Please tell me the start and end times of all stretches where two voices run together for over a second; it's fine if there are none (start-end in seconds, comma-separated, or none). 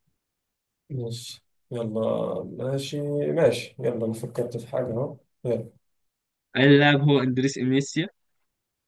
none